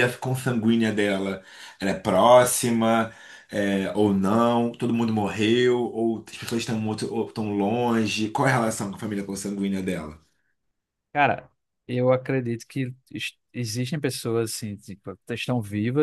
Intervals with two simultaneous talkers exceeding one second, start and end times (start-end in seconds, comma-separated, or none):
none